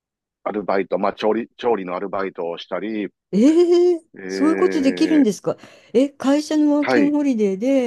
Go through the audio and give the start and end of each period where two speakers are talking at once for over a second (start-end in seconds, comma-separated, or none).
4.1-5.3